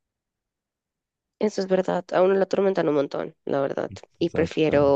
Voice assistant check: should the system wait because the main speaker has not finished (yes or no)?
yes